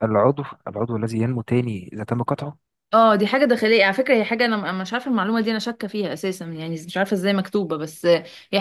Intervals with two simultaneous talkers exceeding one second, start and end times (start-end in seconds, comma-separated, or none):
none